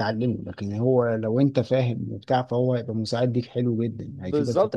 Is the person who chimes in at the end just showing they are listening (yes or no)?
no